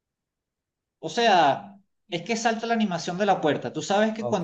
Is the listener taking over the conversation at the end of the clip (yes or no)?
no